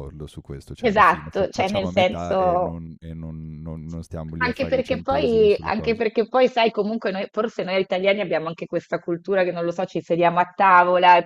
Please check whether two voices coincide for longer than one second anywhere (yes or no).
yes